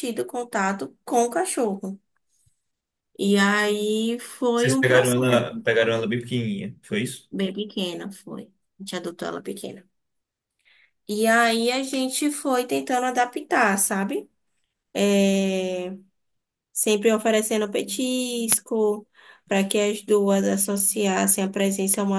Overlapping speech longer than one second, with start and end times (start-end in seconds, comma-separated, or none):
4.6-6.1